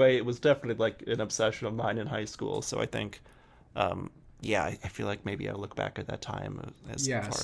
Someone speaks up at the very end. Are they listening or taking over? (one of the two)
taking over